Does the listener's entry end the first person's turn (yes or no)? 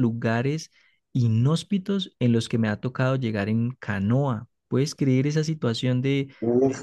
yes